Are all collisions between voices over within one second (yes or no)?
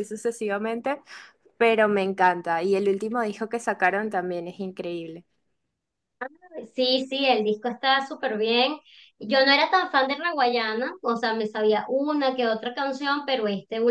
yes